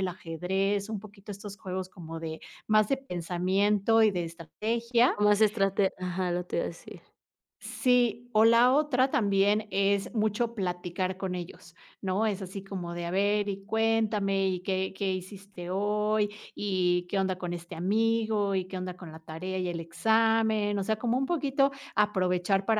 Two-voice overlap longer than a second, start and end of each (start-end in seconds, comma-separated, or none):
none